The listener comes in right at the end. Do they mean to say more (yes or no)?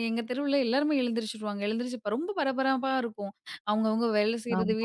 no